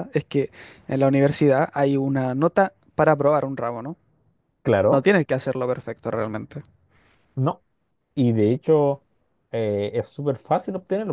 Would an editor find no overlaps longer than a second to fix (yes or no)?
yes